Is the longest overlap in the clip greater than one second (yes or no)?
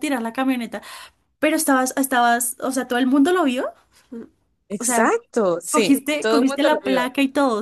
yes